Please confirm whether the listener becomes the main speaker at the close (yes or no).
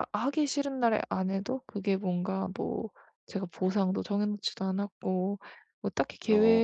no